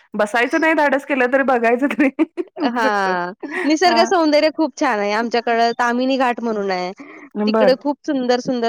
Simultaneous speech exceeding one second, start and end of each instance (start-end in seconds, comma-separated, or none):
none